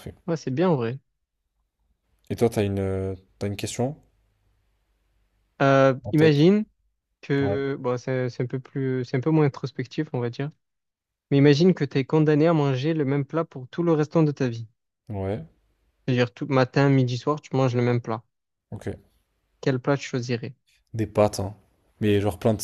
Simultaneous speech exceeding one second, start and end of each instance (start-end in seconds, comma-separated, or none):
none